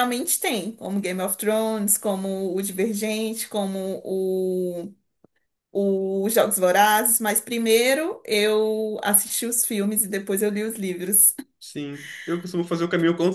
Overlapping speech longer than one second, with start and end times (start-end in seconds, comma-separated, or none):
none